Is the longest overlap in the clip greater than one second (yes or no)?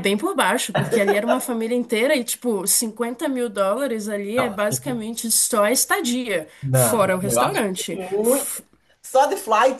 yes